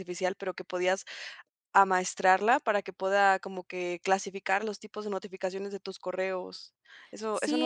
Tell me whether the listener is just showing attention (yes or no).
no